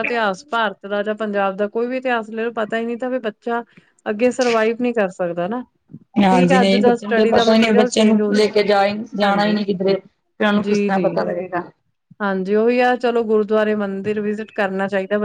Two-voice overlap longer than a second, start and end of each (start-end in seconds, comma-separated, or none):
6.3-8.6